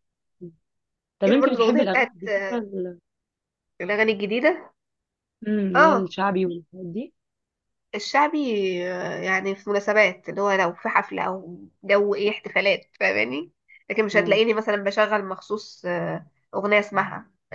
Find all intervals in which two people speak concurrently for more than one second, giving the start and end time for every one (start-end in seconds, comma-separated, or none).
1.2-2.7